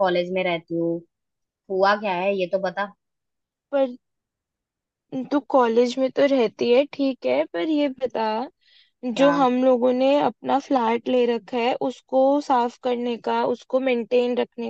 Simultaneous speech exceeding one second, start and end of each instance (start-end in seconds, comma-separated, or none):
none